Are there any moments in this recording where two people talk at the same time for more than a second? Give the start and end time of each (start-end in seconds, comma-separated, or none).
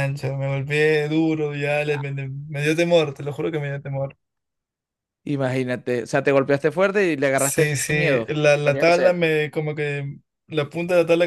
7.4-9.3